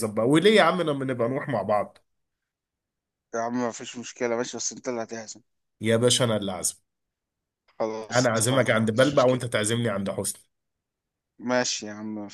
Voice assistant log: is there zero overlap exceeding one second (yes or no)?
no